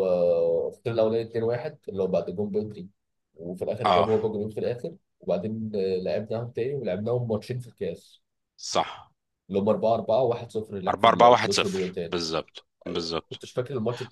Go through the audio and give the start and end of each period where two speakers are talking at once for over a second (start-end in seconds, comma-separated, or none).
10.9-12.2